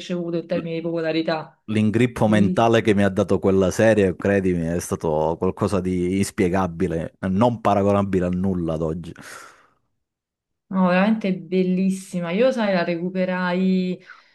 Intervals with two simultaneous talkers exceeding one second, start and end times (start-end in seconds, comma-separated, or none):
none